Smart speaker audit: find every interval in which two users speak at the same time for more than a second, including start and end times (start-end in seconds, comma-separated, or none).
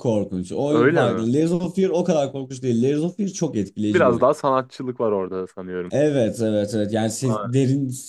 none